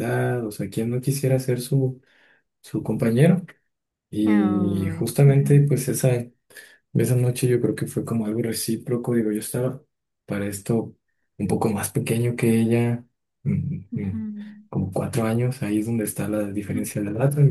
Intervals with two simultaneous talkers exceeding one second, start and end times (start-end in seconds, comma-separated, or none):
4.2-5.7